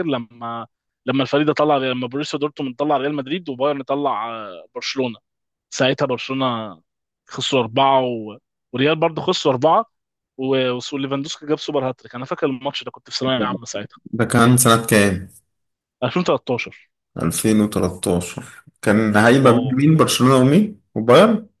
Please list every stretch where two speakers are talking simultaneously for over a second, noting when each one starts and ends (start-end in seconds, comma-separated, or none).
none